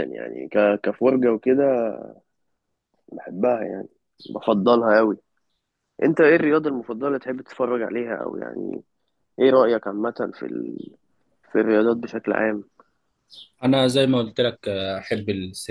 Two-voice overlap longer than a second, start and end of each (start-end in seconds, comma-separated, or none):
none